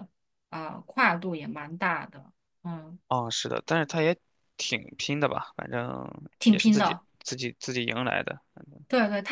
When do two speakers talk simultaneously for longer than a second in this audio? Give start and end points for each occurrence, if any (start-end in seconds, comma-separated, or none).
none